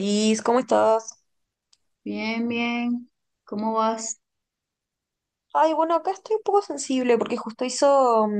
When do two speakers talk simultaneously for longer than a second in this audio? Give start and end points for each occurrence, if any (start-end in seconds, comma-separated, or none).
none